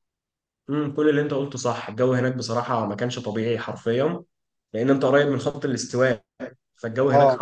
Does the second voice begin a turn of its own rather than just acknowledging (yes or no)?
no